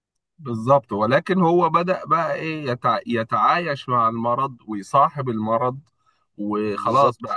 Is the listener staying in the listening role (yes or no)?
yes